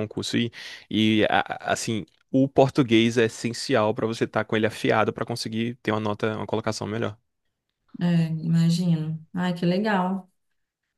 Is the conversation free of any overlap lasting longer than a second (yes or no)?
yes